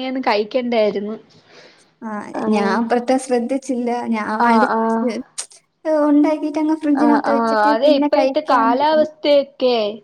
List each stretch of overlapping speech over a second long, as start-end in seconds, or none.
7.0-9.1